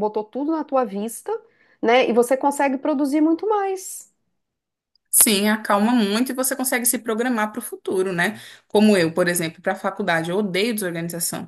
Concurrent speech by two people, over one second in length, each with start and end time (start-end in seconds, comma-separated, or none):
none